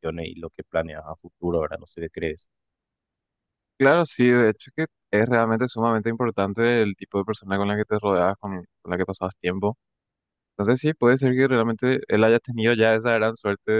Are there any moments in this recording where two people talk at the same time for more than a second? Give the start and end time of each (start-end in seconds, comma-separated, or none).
none